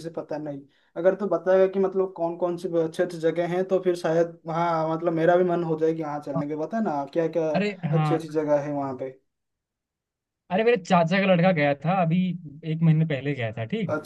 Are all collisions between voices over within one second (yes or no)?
yes